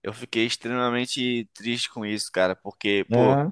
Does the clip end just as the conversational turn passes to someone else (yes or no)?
no